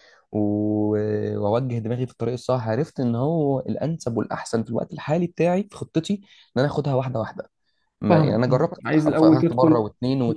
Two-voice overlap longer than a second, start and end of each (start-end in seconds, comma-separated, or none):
8.1-9.8